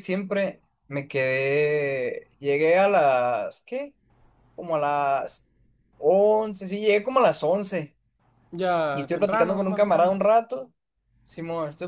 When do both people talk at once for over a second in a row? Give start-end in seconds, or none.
8.9-10.4